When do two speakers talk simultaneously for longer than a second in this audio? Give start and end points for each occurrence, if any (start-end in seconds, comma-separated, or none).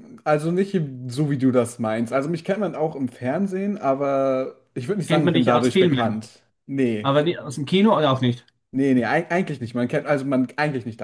5.1-6.3